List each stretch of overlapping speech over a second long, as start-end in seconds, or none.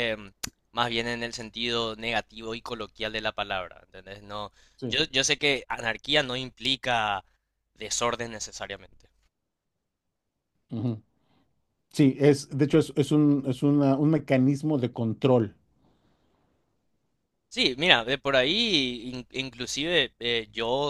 none